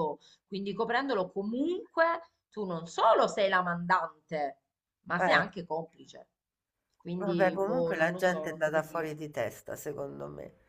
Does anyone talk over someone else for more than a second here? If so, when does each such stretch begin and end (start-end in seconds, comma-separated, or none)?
7.2-9.2